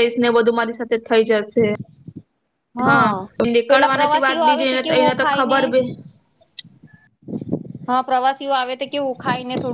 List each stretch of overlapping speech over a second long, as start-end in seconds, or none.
3.7-5.6